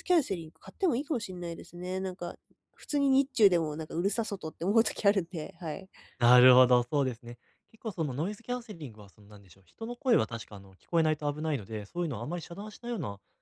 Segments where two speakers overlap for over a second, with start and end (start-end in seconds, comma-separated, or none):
none